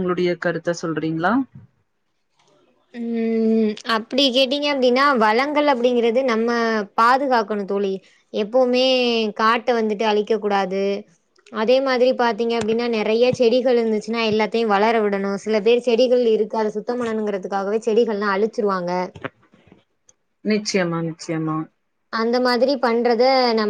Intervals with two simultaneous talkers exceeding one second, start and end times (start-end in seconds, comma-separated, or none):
none